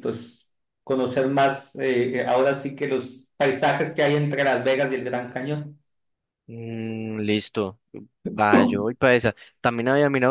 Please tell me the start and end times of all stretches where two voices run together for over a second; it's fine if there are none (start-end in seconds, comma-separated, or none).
none